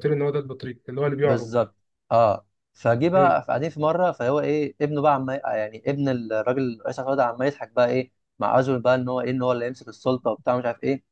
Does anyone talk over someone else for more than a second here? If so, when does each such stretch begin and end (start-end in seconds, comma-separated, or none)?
none